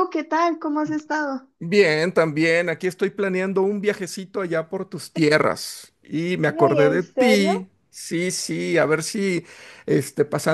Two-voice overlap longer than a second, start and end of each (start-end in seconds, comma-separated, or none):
6.4-7.7